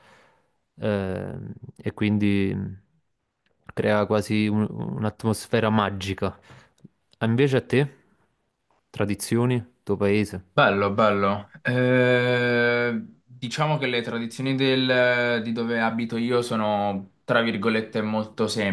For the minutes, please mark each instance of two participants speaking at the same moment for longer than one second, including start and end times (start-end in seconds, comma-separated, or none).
none